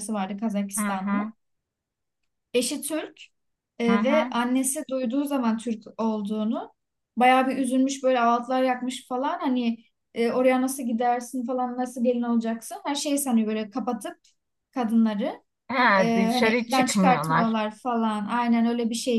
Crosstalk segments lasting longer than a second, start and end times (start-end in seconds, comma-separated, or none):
16.0-17.7